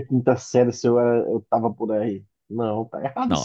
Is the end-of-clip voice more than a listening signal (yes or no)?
yes